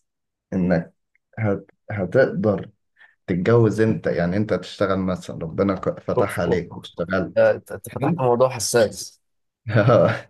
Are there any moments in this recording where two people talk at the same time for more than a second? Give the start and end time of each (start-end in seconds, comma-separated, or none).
6.2-8.2